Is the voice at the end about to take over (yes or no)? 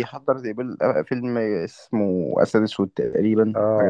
yes